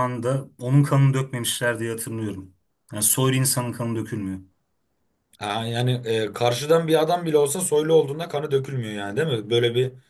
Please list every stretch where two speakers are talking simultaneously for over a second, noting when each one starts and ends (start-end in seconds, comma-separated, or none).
none